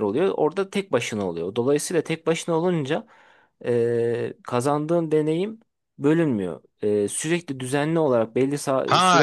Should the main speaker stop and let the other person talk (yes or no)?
yes